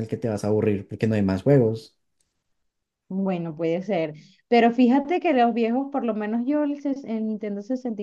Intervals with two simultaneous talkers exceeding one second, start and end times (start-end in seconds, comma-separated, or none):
none